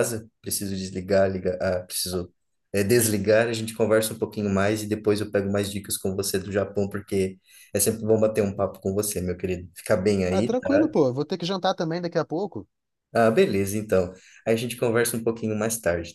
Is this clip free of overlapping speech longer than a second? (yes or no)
yes